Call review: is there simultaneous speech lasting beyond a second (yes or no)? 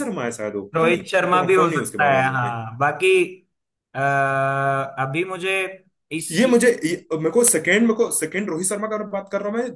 yes